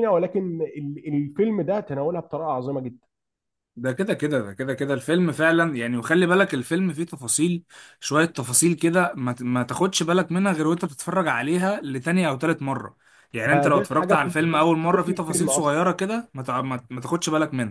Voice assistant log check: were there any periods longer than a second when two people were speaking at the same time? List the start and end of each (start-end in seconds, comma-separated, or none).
13.4-15.8